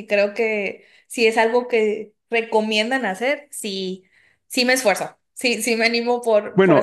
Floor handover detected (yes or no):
yes